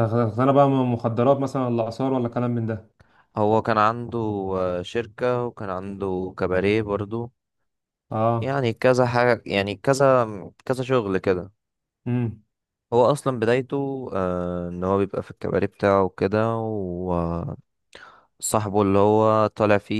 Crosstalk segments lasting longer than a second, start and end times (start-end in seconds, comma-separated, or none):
none